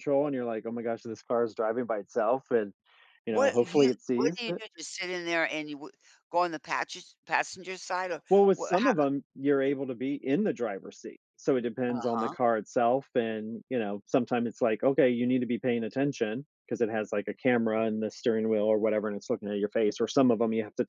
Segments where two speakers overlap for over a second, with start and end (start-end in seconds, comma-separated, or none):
3.3-4.6